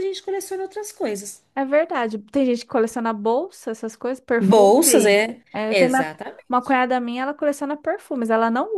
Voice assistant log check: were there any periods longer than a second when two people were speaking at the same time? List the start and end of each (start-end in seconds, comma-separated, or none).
4.4-6.1